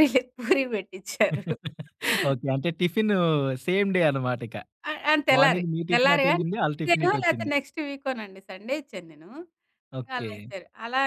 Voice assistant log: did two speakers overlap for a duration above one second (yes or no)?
yes